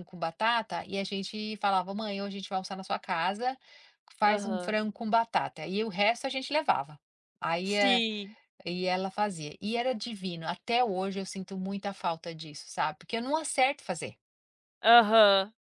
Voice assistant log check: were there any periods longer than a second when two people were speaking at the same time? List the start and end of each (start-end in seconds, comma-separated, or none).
none